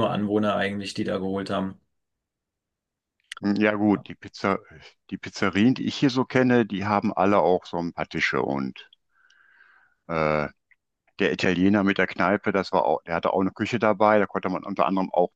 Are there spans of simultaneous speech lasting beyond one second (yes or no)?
no